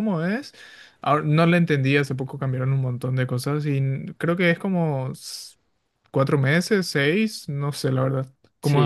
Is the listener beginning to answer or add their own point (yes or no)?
yes